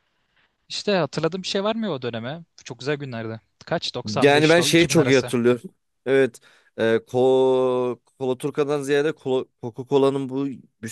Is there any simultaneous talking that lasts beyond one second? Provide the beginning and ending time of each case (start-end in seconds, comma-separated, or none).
4.0-5.3